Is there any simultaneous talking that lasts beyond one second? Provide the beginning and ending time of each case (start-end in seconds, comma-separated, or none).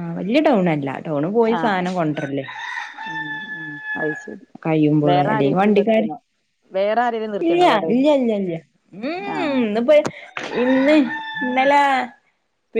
none